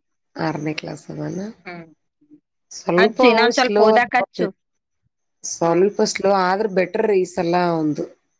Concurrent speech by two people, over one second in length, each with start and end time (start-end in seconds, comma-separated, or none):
3.0-4.5